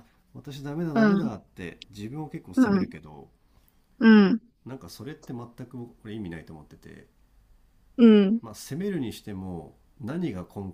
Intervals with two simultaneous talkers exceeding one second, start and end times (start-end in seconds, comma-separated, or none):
none